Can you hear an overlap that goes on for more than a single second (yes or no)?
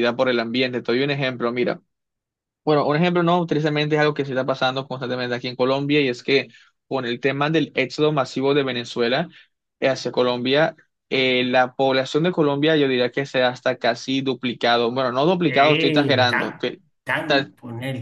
yes